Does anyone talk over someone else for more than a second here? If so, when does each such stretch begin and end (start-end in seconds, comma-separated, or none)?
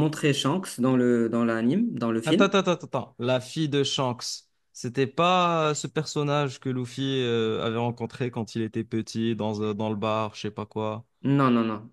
none